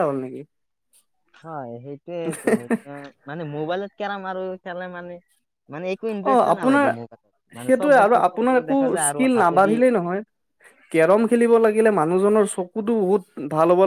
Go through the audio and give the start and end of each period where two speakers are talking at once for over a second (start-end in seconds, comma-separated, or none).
7.6-9.8